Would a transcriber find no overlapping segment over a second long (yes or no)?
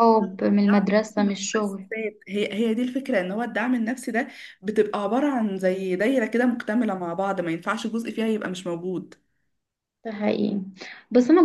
no